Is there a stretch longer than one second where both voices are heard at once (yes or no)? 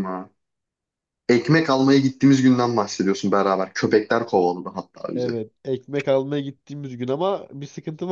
no